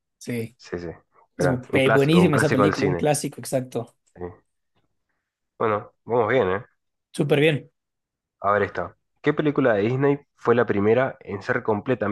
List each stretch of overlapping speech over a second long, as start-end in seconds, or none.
1.4-3.0